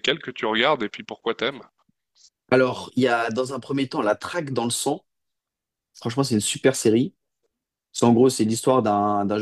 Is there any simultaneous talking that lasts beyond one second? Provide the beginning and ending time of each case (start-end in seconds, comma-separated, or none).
none